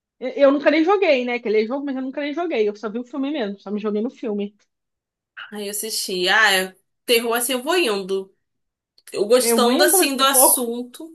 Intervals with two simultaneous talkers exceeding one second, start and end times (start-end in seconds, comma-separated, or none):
9.4-10.7